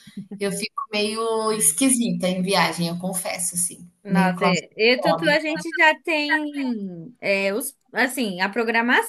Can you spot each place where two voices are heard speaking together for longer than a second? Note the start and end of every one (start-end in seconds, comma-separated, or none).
4.0-5.5